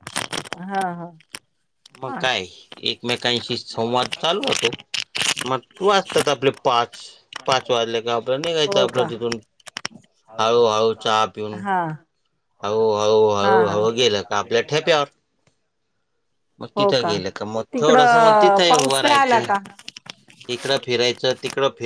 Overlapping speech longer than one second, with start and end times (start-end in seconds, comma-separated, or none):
13.4-14.9, 17.7-19.5